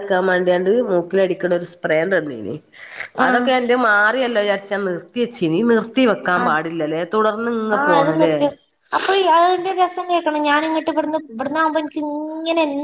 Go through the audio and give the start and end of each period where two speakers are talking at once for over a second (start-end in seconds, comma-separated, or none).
none